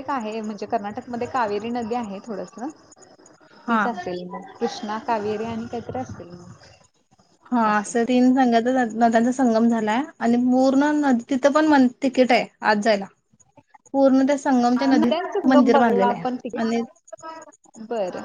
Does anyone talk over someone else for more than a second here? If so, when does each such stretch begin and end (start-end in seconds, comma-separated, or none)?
14.9-16.8